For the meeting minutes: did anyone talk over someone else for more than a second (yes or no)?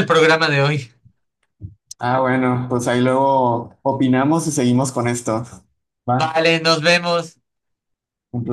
no